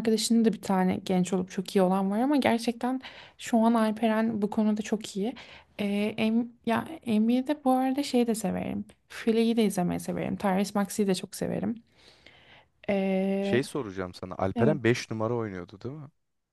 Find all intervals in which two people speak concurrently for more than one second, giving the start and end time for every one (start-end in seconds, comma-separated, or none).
none